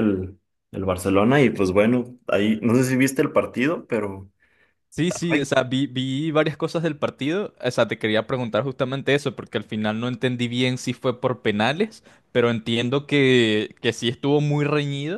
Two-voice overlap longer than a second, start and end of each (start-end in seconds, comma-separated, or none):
none